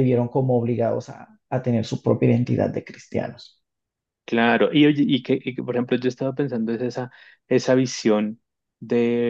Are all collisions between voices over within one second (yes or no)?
yes